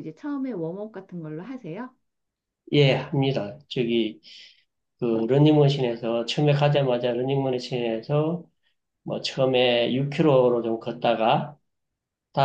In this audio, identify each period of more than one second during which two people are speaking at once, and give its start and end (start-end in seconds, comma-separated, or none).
none